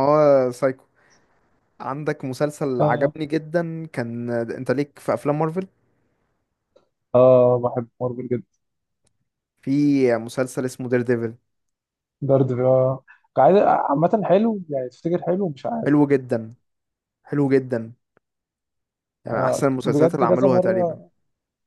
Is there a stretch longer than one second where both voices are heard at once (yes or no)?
yes